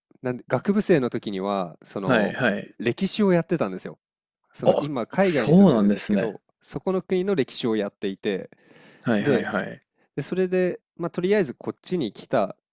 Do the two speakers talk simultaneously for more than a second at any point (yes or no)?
yes